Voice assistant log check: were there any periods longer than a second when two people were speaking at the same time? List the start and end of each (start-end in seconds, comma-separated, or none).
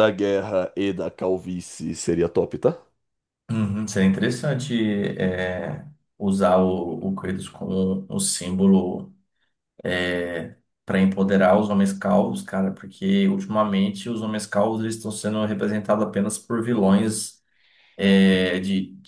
none